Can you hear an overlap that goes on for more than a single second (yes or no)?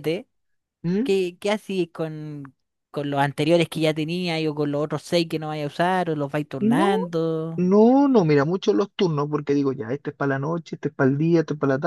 no